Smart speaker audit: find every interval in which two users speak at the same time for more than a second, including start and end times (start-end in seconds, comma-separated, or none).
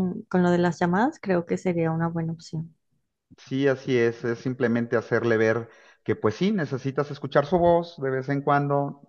none